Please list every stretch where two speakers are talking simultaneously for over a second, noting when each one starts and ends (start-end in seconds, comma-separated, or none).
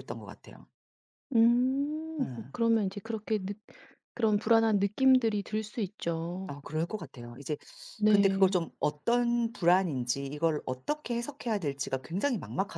none